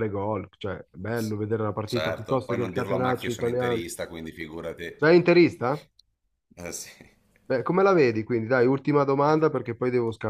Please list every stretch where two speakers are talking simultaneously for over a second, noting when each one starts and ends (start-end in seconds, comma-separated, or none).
1.8-3.8